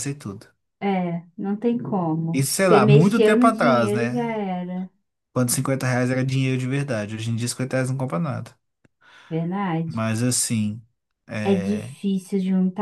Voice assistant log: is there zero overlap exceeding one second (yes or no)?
no